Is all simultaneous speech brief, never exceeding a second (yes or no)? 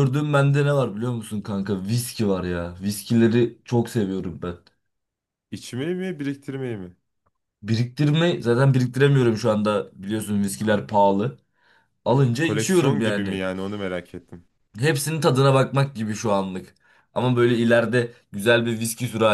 no